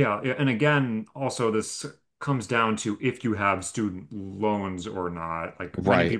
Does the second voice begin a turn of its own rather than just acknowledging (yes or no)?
no